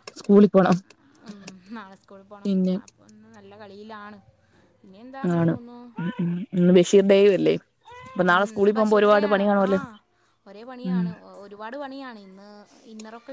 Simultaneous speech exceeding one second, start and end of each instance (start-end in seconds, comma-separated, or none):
none